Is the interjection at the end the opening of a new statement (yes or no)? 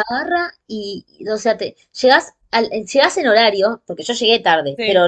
no